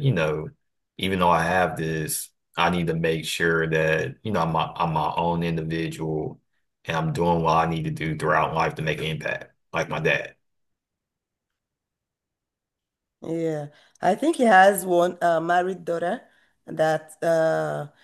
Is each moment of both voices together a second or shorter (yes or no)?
yes